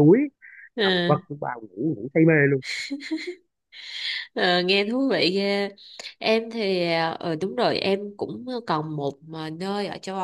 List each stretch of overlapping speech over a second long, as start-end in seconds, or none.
none